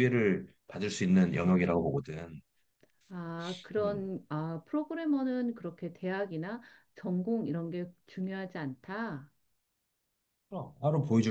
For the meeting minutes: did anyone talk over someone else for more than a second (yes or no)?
no